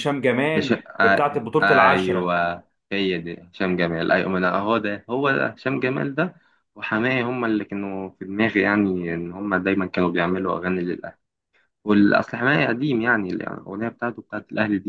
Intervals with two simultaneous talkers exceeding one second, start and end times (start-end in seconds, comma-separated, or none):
0.6-2.3